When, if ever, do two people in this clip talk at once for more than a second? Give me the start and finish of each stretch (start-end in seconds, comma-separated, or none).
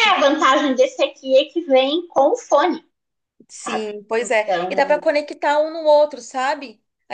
3.5-5.1